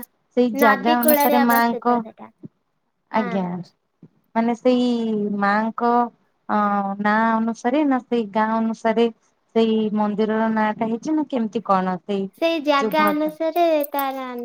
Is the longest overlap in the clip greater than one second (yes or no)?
yes